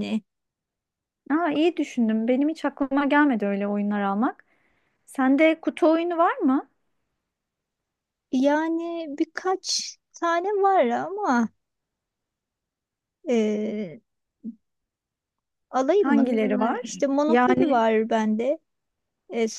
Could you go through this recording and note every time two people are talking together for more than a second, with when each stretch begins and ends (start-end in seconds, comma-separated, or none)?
16.0-17.8